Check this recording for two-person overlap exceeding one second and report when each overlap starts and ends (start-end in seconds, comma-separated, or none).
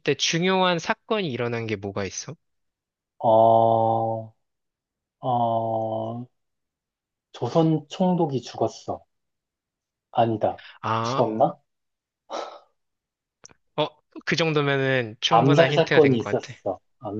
15.3-16.5